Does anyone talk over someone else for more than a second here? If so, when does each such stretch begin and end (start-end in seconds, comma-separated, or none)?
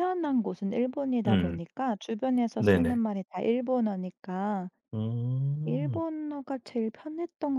none